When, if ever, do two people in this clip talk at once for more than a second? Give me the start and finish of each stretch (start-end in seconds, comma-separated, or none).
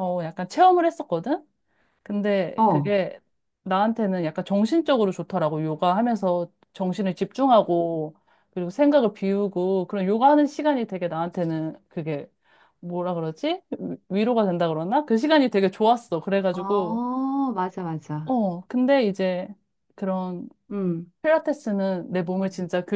none